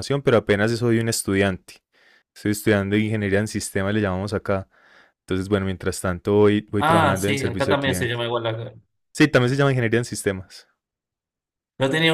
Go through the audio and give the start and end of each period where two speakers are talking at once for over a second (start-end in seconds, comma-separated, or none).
6.8-8.2